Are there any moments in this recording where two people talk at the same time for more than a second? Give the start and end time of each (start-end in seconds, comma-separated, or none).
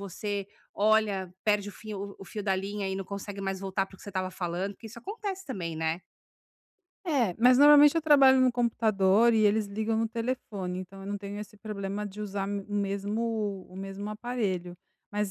none